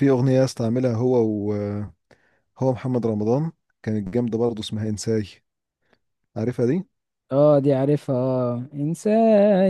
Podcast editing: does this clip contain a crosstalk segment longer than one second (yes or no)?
no